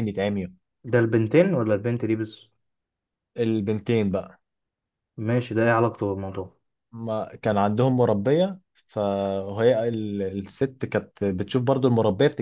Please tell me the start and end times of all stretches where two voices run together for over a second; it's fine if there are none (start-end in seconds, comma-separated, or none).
none